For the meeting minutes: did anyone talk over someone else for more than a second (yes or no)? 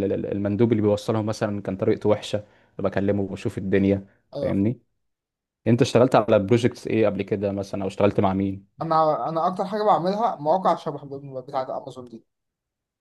no